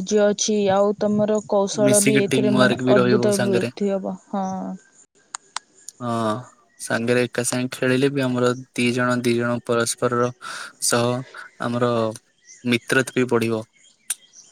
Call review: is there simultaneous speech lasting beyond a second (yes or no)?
yes